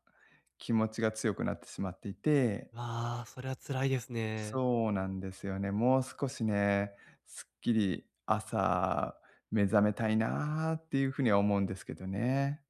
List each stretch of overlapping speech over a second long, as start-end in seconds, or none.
none